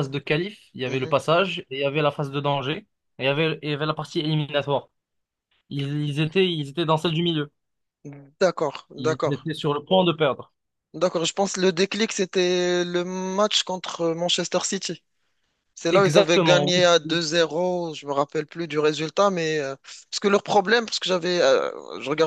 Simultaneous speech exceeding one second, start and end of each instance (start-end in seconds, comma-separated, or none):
15.9-17.2